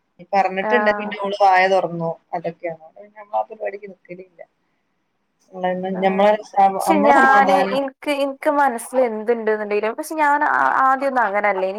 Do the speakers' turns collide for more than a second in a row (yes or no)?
no